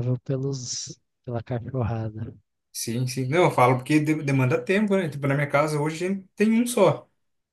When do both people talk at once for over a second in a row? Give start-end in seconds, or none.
none